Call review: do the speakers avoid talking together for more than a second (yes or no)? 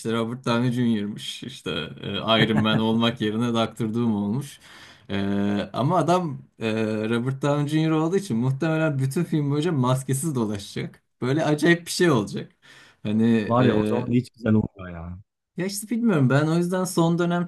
yes